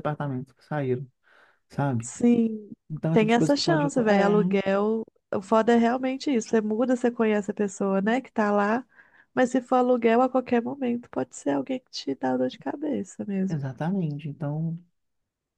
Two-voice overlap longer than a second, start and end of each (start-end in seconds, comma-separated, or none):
3.1-4.3